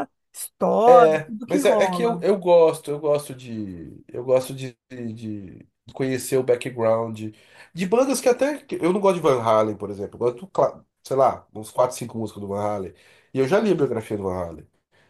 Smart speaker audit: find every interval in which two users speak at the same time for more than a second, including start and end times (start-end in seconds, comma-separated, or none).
0.9-2.2